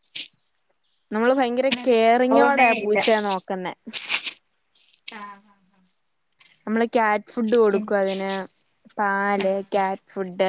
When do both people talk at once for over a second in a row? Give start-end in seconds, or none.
1.2-3.0